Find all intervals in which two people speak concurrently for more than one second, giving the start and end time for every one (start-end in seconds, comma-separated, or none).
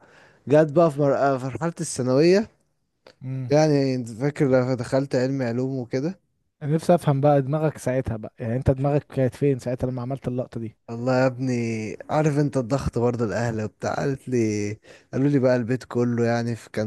none